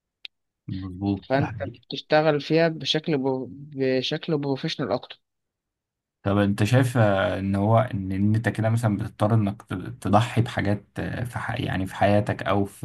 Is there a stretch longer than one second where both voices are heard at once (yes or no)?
no